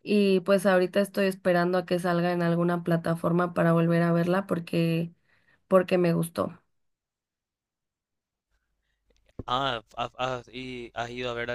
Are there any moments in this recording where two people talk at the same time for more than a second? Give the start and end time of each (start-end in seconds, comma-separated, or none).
none